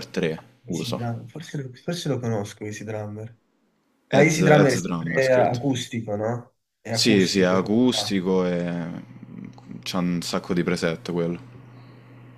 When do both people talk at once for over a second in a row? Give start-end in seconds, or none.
4.1-5.6, 6.9-8.2